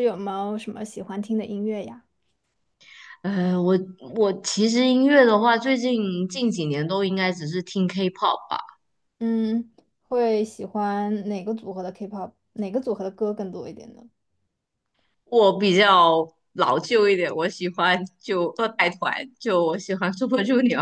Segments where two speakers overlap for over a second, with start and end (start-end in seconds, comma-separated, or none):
none